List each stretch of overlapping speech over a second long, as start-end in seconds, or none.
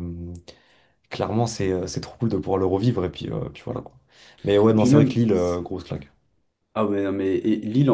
none